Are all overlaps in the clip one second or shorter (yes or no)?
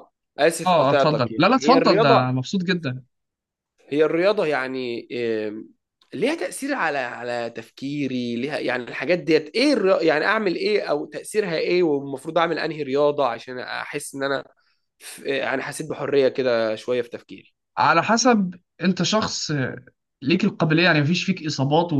no